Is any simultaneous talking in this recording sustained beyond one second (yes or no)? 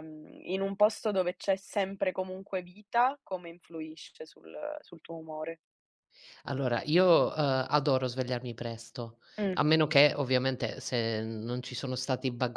no